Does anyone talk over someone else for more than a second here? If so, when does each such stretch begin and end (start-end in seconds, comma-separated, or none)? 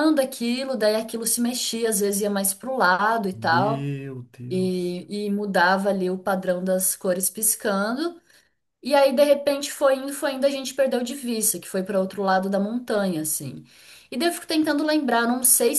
none